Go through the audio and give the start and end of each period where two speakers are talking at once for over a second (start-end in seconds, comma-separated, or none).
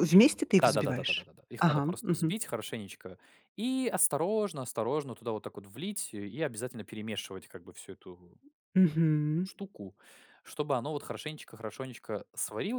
0.6-2.3